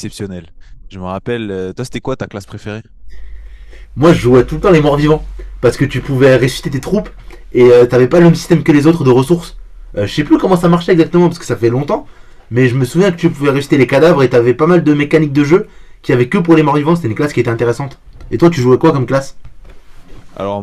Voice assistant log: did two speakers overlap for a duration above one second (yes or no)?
no